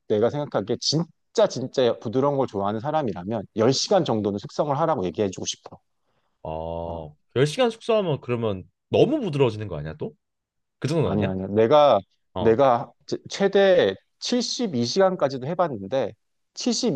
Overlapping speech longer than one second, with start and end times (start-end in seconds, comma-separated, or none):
none